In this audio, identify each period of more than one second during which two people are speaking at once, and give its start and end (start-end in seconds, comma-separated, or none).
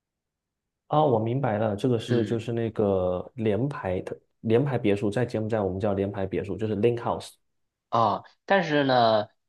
none